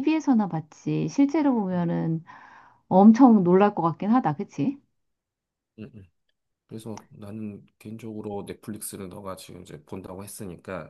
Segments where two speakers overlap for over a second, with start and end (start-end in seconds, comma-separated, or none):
none